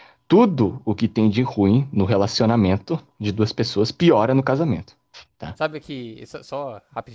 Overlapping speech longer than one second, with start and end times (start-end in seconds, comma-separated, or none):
none